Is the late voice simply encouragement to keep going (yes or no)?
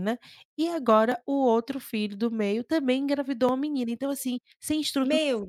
no